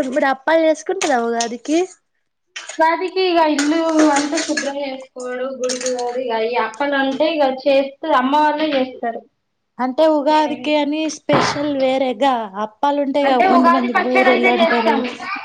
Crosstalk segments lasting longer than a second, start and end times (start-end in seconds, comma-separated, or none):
13.3-14.9